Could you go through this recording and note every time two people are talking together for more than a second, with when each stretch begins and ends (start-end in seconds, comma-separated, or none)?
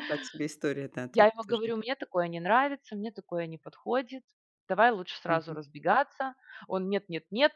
none